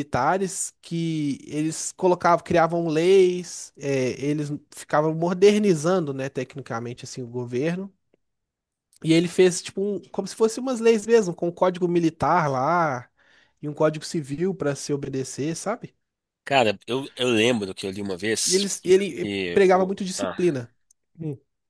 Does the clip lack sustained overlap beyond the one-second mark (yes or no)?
no